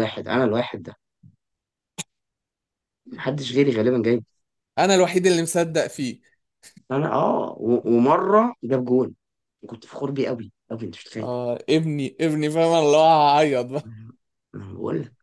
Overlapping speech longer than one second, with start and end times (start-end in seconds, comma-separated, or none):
none